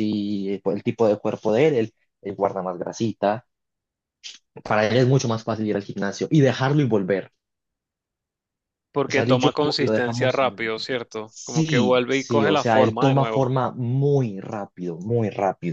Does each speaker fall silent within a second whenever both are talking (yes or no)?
no